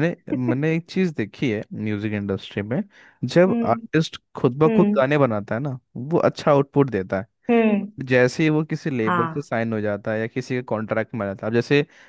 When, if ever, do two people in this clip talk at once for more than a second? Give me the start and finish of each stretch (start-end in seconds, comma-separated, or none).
none